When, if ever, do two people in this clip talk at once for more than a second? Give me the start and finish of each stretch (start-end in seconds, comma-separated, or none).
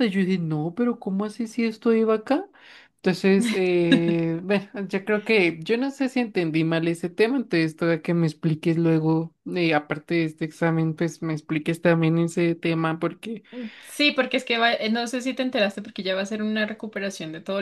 none